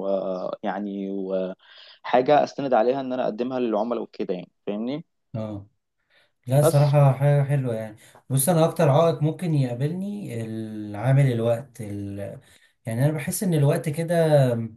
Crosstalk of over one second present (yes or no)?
no